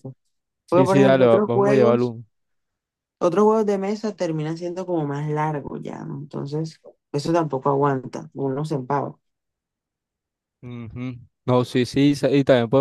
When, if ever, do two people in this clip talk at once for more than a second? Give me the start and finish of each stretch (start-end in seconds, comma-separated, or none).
0.7-2.1